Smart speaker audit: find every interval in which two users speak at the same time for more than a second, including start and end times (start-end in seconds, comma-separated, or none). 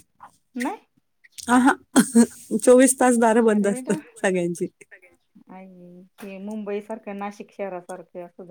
none